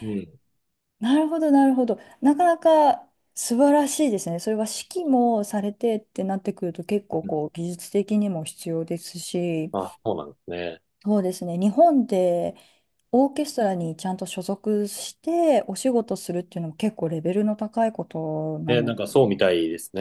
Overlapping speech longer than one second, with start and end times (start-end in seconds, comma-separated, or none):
none